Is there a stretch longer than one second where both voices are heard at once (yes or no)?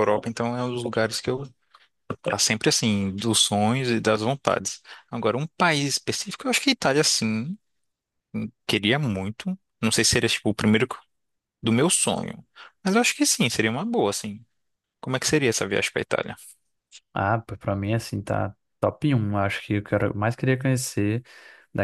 no